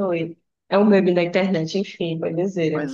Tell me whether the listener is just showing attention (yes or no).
no